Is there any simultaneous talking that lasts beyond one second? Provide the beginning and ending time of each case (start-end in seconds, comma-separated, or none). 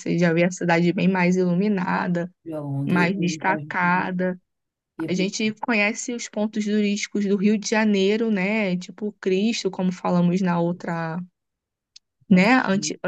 2.9-4.1